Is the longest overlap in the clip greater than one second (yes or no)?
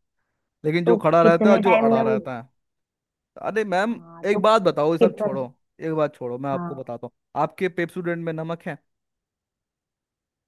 yes